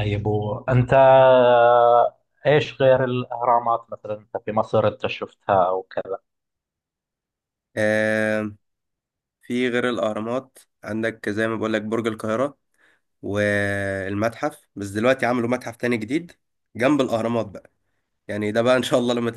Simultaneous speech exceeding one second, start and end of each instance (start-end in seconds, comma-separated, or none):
none